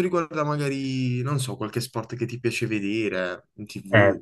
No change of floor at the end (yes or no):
no